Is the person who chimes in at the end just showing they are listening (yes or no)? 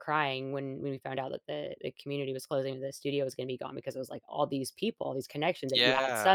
yes